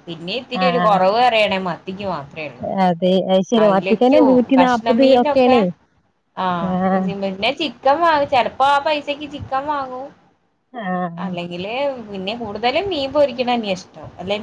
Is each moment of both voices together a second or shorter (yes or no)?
no